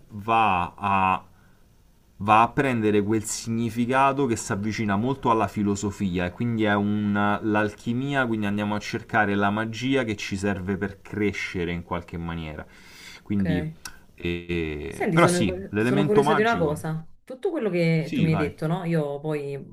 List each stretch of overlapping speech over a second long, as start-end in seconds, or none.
14.9-16.8